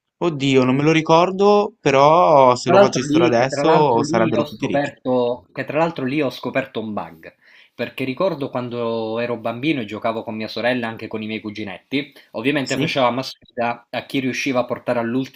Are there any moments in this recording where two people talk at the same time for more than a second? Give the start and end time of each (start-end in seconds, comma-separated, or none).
2.6-4.9